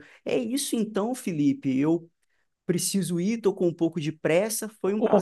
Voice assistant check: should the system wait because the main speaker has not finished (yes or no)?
no